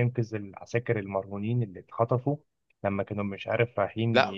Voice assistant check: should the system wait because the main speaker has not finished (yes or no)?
no